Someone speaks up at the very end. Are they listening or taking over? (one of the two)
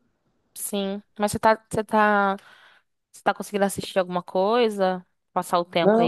taking over